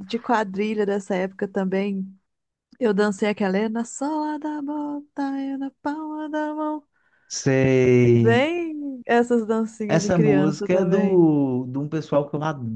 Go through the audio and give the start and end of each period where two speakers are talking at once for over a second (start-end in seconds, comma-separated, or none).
9.9-11.2